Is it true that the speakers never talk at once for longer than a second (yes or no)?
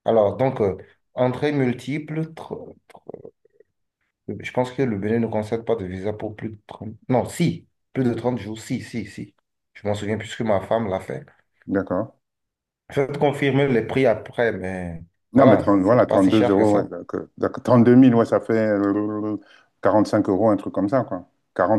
no